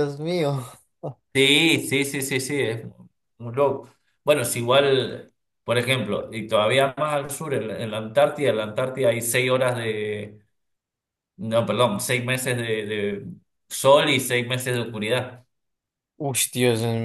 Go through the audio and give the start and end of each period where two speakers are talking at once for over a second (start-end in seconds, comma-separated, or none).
none